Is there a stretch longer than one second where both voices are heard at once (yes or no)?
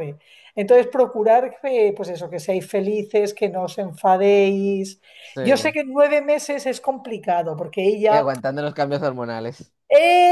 no